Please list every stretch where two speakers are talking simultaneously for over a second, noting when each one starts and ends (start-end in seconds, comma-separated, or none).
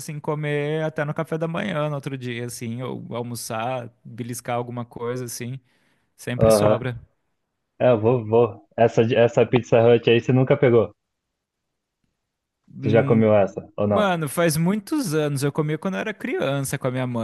none